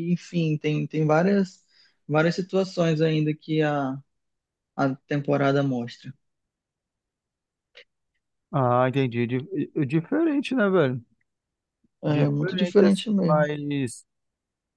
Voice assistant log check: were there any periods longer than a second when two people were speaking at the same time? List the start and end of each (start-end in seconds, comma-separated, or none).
12.0-13.5